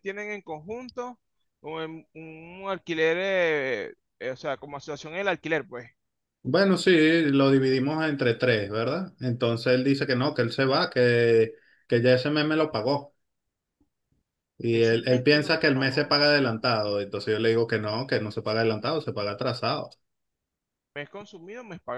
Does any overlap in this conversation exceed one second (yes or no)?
yes